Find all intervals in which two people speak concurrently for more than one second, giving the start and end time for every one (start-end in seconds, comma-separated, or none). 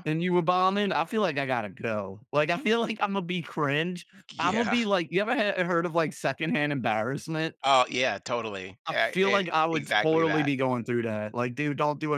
8.9-10.5